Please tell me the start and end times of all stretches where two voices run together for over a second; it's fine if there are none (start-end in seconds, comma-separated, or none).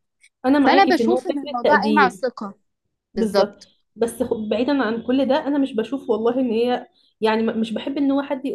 0.6-2.3